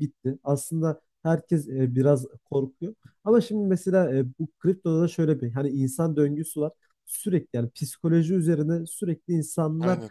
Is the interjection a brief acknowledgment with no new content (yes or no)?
yes